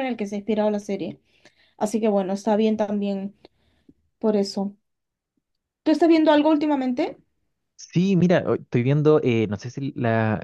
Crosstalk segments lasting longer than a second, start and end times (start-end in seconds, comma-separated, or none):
none